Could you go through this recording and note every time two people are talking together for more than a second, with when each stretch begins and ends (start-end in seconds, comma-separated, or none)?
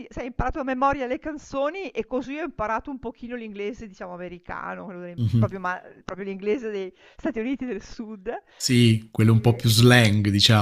8.6-9.8